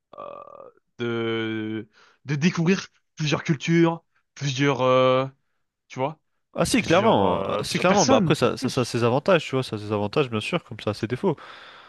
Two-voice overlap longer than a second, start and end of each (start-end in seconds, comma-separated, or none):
6.8-8.9